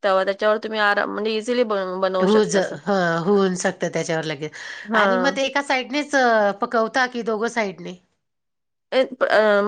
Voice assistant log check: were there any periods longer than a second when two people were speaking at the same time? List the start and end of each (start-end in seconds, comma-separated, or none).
none